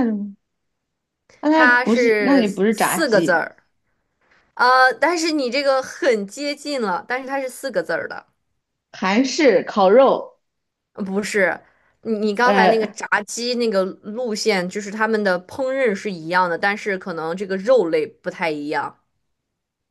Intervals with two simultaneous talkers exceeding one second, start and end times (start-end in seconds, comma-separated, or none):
1.5-3.4